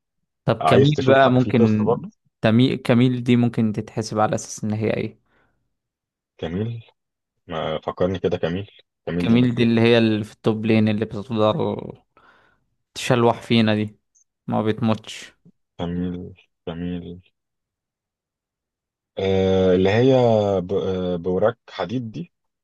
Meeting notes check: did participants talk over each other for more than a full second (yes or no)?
yes